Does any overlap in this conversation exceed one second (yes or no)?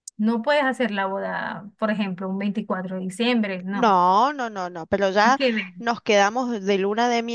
no